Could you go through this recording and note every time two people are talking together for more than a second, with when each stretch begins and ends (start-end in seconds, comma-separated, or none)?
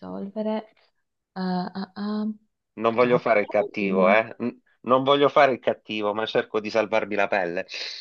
2.9-4.2